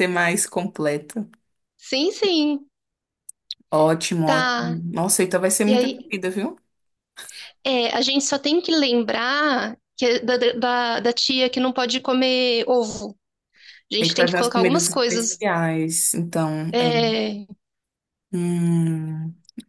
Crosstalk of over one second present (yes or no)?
yes